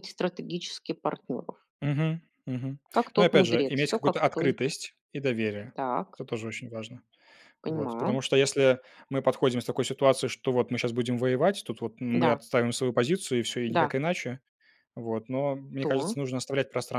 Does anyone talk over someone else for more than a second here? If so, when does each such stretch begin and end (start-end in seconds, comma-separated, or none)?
3.1-4.6